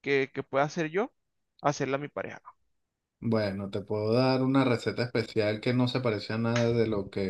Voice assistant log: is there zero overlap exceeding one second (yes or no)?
yes